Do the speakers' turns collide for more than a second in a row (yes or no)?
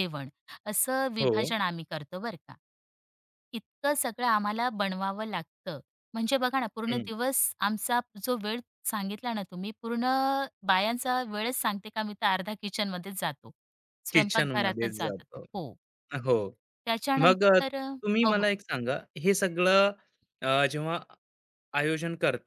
yes